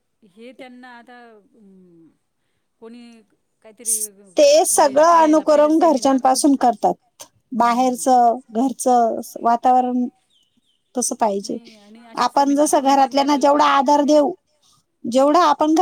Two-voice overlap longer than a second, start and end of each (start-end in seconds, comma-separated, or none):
4.8-6.2, 12.2-13.8